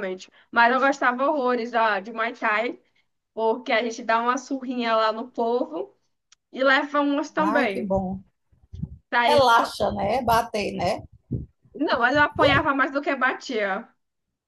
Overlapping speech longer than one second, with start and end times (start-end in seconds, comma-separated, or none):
none